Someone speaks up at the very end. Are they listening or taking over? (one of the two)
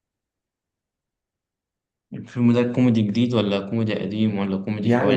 taking over